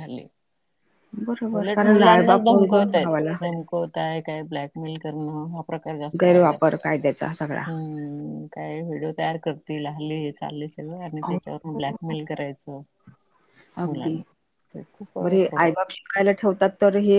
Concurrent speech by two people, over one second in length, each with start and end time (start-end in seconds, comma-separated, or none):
1.6-3.4